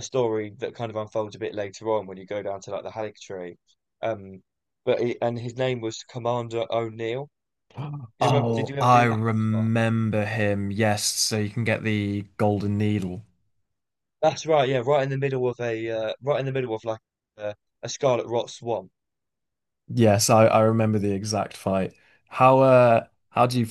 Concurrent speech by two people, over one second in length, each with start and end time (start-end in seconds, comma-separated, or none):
8.2-9.7